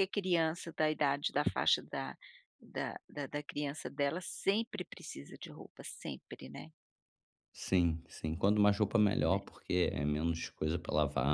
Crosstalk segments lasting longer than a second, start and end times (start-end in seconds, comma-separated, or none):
none